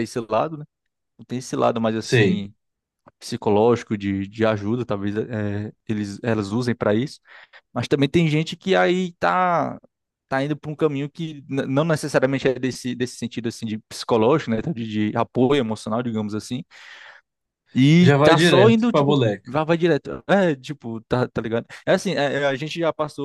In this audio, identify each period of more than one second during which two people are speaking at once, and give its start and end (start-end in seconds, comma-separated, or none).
18.0-19.5